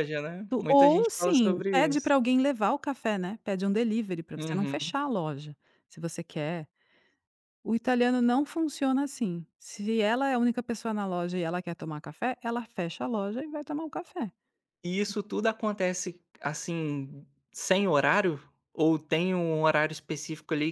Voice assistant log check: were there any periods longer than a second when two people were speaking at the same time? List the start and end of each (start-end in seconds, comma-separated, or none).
0.7-2.1